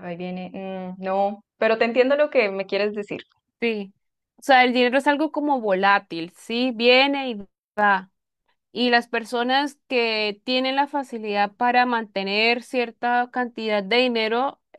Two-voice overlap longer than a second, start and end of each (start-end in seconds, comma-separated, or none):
none